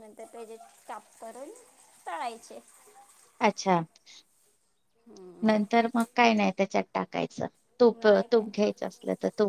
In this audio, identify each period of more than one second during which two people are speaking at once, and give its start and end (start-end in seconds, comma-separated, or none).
none